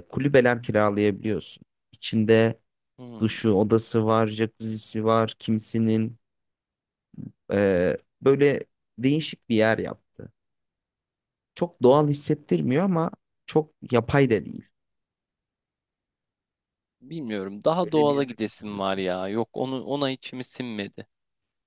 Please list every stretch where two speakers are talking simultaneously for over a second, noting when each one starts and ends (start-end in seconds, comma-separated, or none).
17.8-19.0